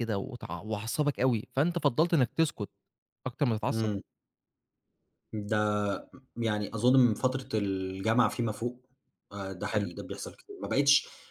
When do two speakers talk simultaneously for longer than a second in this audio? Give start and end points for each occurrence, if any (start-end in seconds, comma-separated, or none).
none